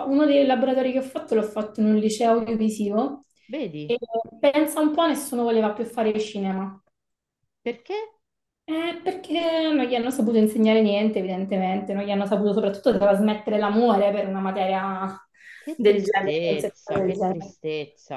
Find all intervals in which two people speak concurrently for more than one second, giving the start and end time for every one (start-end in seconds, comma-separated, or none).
15.7-17.5